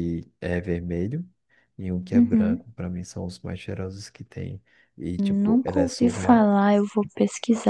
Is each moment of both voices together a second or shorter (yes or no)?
no